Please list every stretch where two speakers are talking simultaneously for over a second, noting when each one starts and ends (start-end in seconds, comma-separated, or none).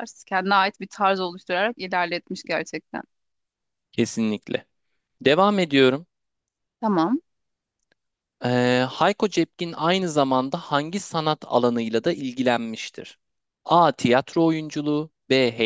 none